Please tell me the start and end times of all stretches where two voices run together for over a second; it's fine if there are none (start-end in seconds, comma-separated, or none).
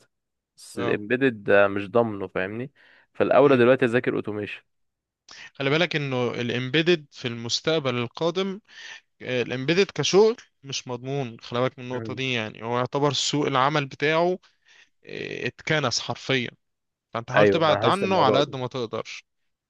17.4-18.6